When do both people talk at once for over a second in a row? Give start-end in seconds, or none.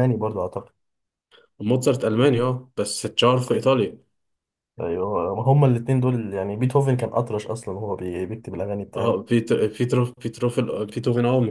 none